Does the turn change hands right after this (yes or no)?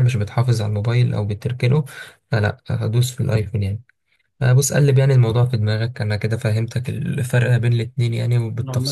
yes